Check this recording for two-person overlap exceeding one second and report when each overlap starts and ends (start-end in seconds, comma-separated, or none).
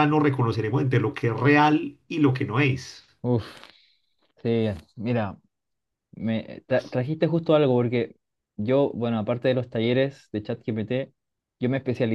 none